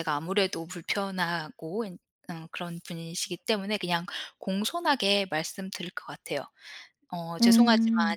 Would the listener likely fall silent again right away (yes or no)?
yes